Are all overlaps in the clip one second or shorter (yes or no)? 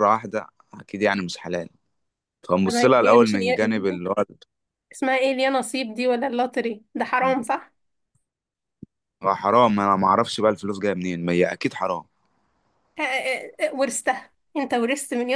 no